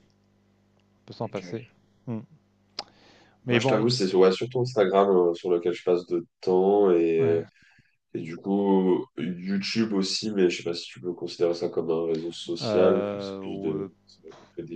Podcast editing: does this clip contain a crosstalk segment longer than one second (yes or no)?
yes